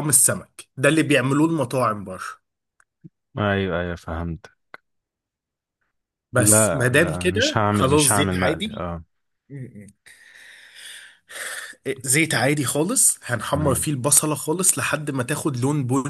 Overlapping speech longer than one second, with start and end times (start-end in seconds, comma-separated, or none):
6.4-8.9